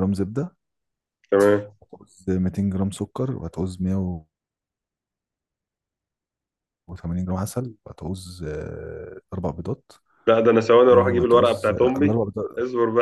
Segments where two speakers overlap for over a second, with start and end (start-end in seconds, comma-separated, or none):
10.9-12.2